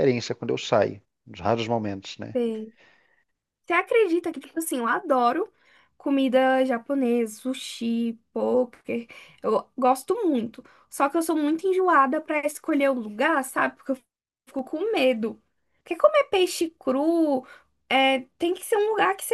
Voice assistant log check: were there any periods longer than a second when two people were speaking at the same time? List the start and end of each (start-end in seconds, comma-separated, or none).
none